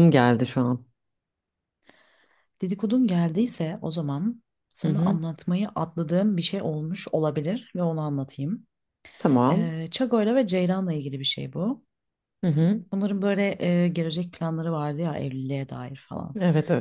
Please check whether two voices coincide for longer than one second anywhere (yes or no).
no